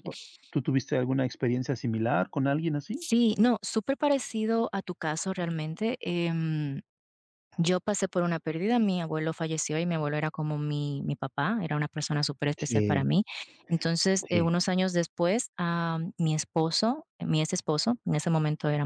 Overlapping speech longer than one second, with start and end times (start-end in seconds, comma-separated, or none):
none